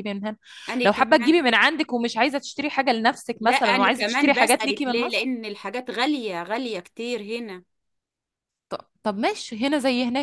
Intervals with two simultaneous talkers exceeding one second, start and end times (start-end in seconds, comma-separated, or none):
3.4-5.3